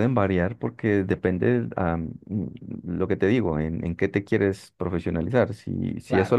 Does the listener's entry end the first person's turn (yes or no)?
no